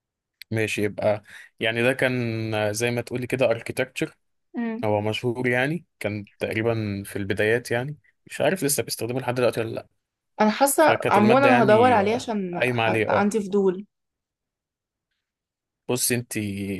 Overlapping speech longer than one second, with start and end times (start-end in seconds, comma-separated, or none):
10.8-13.3